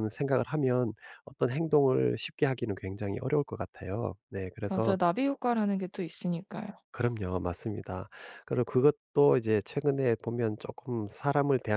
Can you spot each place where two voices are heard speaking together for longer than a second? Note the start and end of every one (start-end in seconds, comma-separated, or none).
none